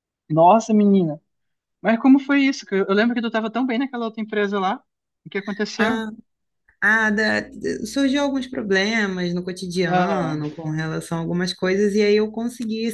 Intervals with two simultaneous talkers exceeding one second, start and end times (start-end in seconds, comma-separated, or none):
none